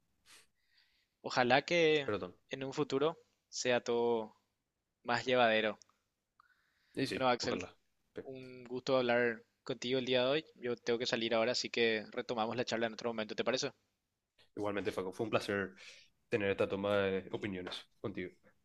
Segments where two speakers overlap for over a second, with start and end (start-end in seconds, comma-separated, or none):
none